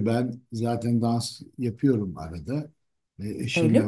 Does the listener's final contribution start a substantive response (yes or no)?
no